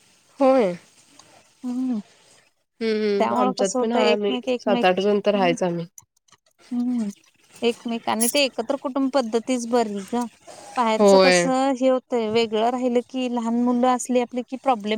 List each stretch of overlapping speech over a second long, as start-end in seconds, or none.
3.4-5.5